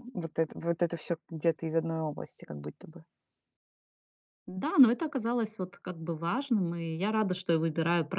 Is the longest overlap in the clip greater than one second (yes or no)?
no